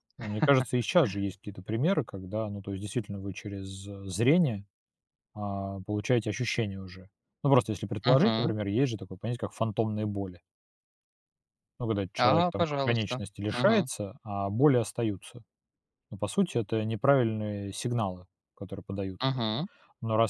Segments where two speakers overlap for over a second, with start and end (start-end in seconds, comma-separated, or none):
12.2-13.9